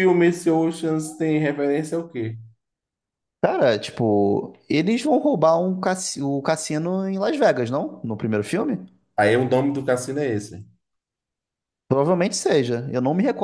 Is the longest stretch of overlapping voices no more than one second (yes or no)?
yes